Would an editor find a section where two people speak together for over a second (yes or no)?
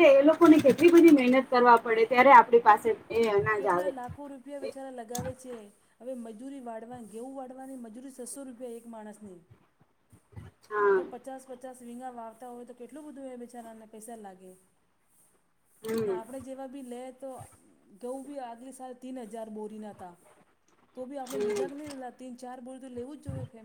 no